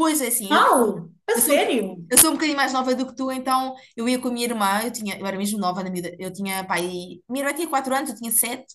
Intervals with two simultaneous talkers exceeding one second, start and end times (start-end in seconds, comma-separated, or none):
none